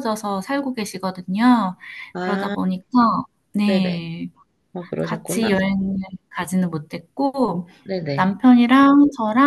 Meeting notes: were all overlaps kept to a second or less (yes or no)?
yes